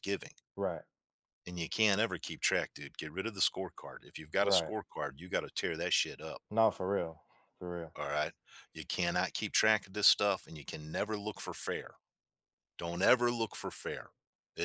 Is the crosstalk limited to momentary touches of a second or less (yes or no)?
yes